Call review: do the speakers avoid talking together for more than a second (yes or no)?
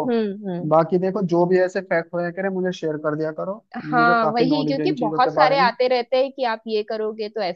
no